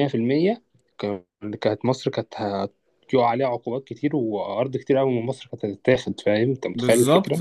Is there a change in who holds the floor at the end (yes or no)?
yes